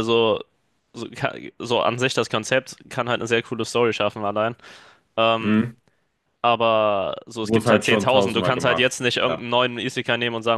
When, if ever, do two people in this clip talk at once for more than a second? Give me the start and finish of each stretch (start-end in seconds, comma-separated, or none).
7.4-9.4